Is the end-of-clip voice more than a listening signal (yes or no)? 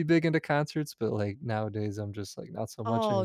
yes